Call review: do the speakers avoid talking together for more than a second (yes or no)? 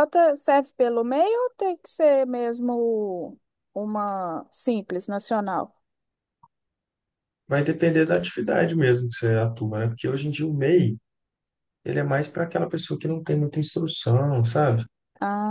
yes